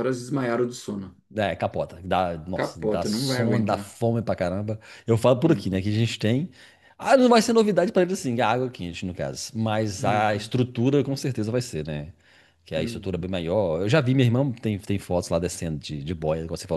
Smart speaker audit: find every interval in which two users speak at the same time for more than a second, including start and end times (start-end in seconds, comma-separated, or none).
2.5-4.0